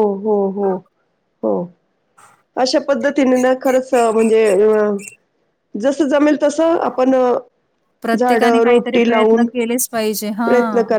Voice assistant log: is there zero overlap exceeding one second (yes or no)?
no